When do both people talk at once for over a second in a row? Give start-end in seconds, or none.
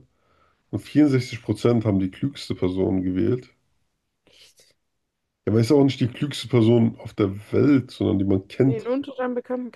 none